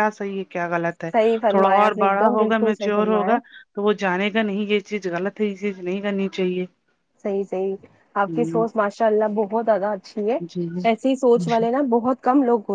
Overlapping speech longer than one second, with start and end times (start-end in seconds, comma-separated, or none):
1.5-3.3